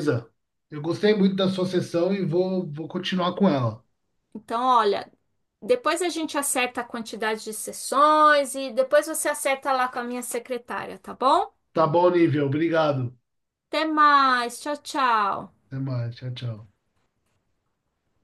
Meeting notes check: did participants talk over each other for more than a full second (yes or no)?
no